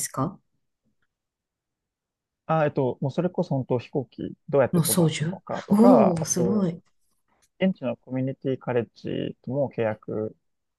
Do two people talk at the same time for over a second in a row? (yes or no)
yes